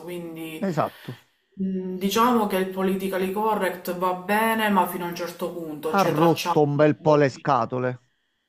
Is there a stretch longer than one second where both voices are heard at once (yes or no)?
yes